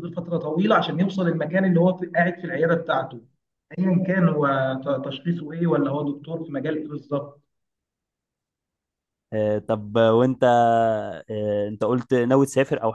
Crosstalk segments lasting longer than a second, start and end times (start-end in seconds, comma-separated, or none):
none